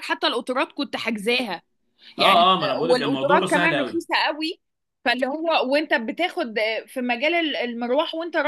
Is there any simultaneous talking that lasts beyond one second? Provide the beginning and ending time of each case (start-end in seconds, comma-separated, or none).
2.2-4.0